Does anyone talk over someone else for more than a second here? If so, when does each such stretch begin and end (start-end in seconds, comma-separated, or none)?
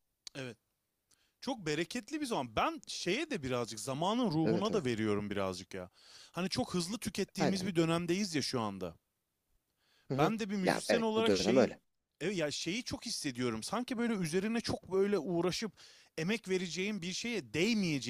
10.1-11.8